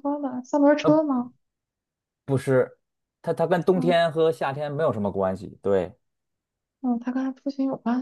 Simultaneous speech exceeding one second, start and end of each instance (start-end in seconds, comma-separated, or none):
none